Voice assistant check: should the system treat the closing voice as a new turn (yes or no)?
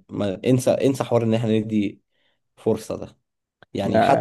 no